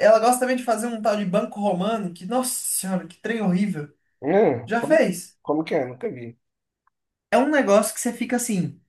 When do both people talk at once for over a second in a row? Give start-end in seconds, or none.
none